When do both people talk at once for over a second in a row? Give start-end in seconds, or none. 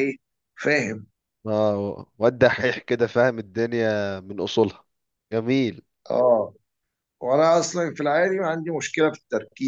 none